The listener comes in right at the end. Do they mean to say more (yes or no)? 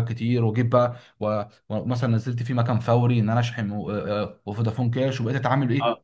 yes